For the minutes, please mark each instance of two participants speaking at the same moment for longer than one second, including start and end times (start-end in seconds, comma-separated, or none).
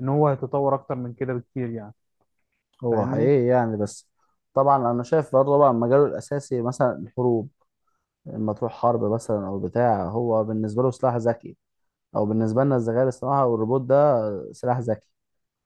none